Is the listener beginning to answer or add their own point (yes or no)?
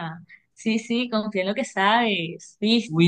yes